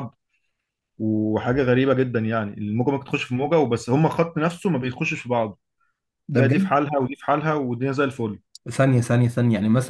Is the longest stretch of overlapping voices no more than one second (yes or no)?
yes